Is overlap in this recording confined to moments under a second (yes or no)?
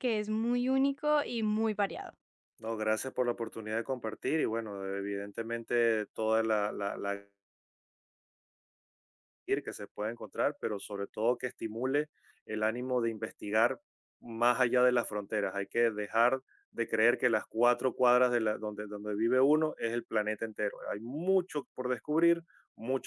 yes